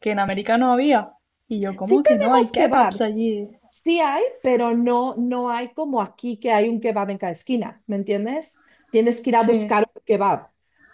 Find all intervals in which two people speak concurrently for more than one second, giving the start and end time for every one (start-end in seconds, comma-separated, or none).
1.8-3.2